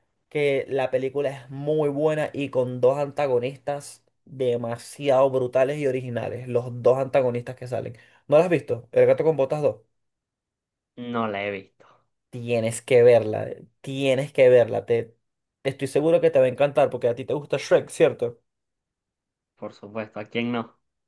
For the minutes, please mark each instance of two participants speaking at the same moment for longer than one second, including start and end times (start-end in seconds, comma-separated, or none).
none